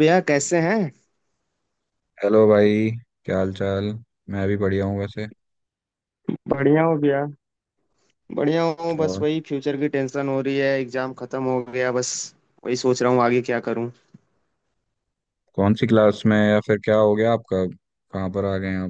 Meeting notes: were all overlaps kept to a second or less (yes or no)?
yes